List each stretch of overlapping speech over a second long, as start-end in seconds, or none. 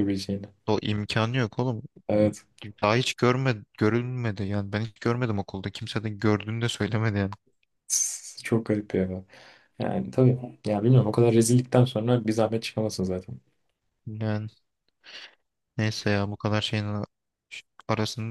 none